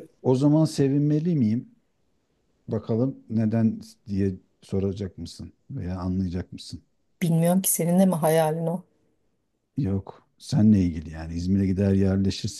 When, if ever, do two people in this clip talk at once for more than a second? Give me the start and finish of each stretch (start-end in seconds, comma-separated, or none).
none